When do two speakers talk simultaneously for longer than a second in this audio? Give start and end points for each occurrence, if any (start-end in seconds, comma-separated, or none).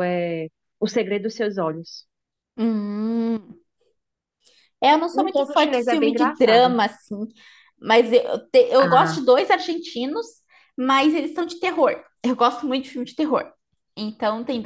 5.1-6.8